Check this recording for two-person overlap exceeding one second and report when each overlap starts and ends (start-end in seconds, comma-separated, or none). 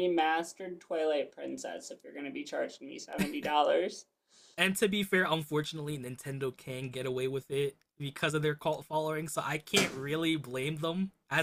none